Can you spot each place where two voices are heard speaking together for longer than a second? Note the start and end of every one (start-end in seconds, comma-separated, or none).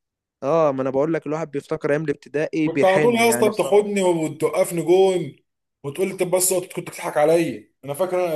2.6-3.9